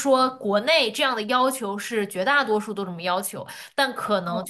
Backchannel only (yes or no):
yes